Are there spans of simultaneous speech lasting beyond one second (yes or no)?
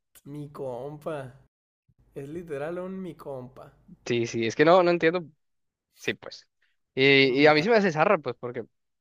no